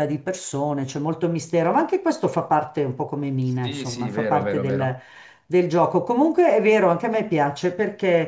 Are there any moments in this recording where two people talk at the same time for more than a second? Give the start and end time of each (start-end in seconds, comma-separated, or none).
3.4-5.0